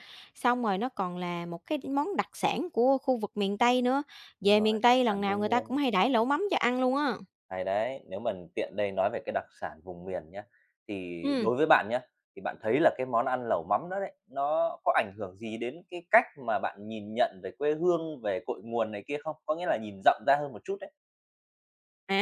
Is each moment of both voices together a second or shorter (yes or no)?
no